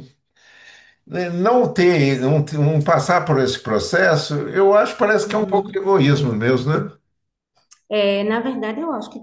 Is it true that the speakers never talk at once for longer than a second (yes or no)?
yes